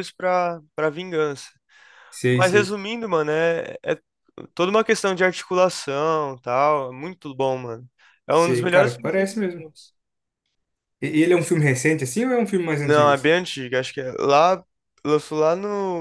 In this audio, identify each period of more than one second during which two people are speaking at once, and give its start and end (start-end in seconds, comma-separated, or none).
8.3-9.6